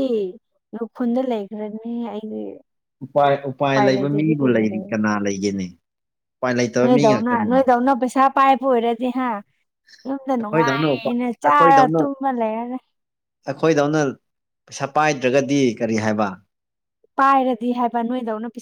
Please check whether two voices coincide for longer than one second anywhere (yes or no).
yes